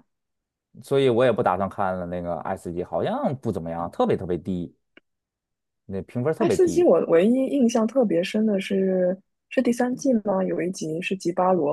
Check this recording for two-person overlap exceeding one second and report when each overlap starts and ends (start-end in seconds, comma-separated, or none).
none